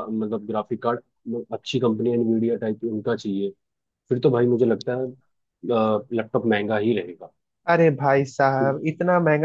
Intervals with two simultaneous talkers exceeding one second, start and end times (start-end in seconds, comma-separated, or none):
none